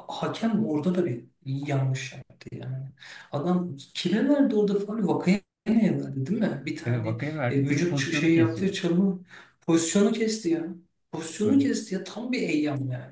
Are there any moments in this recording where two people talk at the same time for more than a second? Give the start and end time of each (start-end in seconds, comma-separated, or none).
6.8-8.8